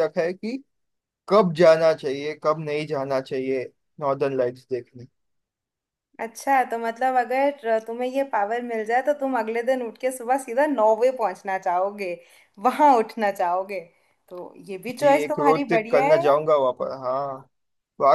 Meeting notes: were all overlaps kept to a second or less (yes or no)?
no